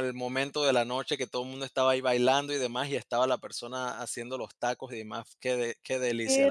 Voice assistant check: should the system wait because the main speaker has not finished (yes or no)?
no